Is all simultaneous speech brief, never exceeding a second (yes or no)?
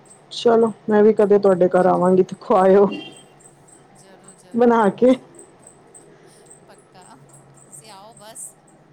yes